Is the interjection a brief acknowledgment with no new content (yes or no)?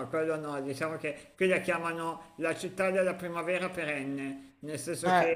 yes